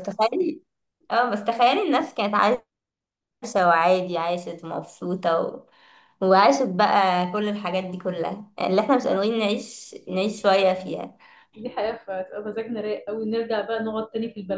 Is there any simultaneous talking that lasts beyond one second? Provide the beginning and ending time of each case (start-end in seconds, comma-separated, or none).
none